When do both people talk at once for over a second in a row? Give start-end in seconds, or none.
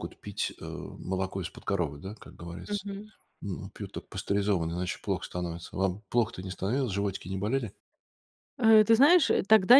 none